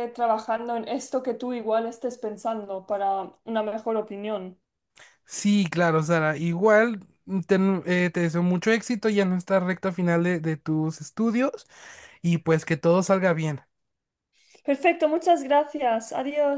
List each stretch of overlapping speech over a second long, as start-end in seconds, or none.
none